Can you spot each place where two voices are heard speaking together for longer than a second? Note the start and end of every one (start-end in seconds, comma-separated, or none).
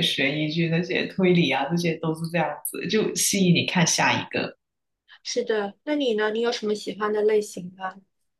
none